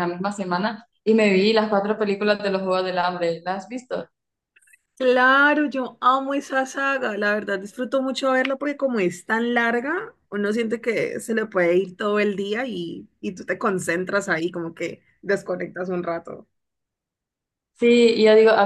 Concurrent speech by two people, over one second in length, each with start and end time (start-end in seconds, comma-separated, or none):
none